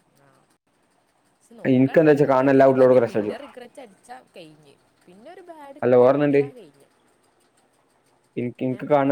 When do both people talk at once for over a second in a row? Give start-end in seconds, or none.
1.8-3.3